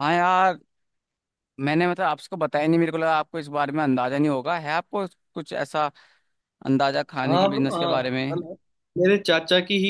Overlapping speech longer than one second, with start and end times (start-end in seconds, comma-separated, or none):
7.2-8.5